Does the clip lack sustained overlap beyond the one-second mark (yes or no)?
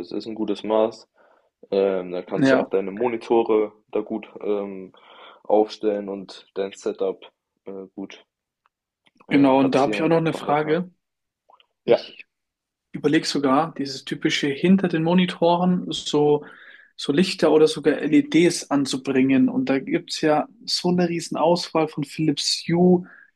no